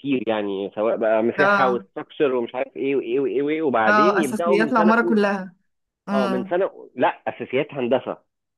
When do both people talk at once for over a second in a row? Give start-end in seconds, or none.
3.9-5.2